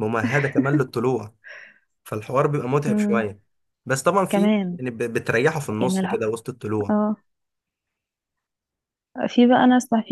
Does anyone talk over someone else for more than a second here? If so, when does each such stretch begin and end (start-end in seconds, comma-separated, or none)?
none